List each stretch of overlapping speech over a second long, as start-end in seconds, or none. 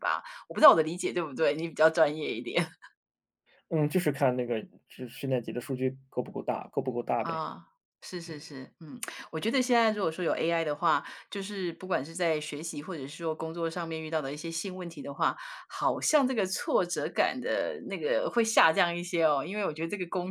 none